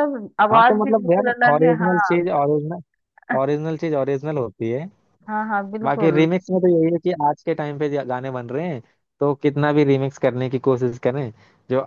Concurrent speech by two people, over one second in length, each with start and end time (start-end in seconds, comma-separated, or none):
0.5-2.2